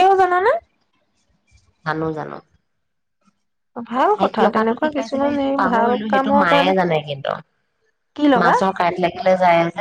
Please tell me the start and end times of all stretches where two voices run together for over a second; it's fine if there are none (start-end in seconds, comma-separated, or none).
4.1-6.7